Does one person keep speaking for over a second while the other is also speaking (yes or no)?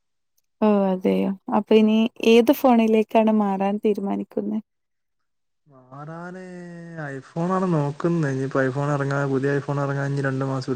no